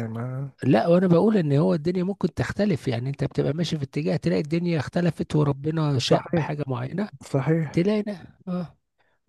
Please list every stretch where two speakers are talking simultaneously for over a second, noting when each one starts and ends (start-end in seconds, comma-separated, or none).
none